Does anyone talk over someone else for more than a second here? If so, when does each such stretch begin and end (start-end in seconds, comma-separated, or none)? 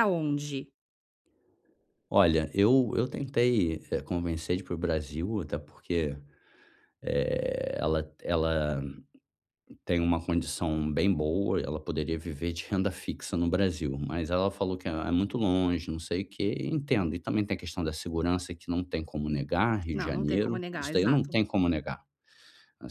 19.9-21.4